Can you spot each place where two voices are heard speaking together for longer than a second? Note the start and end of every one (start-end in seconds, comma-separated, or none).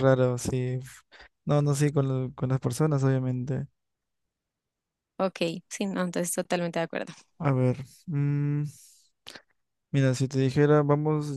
none